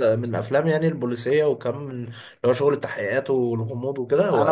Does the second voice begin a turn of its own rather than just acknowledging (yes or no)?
yes